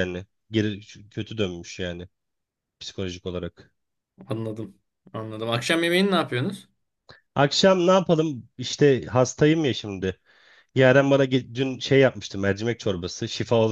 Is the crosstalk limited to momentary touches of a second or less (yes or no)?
yes